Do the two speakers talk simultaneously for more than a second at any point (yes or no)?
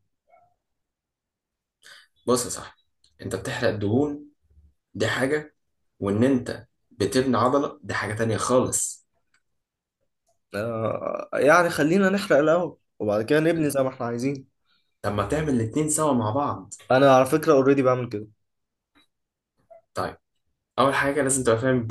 no